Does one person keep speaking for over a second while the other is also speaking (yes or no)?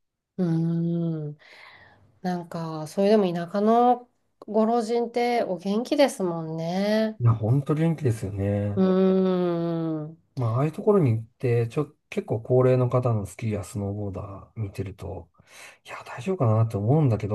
no